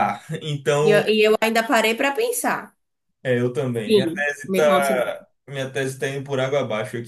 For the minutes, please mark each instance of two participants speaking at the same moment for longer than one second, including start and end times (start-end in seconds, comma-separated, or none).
3.8-5.2